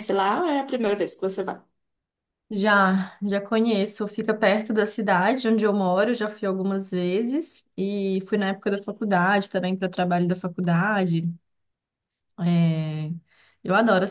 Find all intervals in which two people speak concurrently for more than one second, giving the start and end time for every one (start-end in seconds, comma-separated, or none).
none